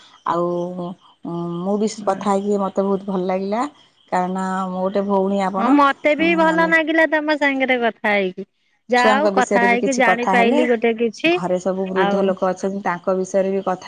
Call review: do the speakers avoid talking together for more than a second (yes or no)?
no